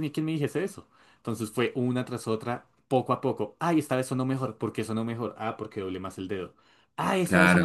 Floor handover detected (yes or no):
no